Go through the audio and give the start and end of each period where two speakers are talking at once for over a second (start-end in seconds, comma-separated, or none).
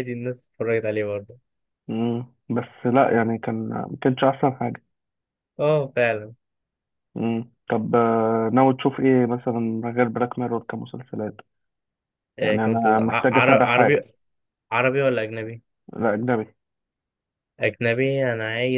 12.4-14.0